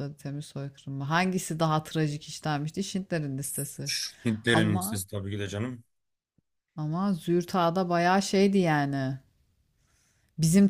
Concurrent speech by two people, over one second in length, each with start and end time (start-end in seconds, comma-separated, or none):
none